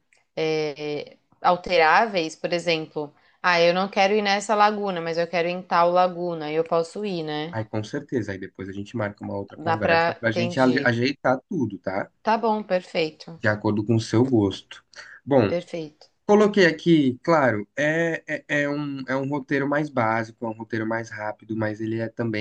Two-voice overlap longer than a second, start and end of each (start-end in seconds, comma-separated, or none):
9.6-11.0